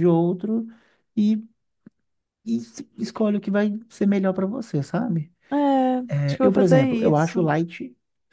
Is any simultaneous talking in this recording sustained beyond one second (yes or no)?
yes